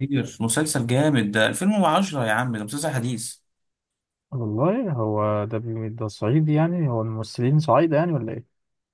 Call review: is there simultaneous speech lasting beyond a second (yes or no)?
no